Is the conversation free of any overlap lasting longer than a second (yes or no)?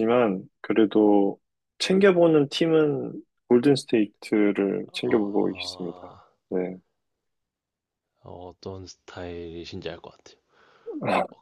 yes